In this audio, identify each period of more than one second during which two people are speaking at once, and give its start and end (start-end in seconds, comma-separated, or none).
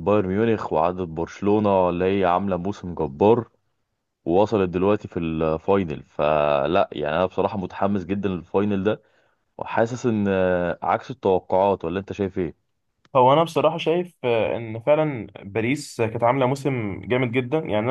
none